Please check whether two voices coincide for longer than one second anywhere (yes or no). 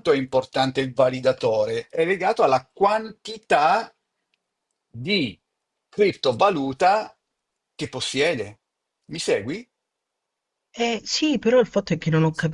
no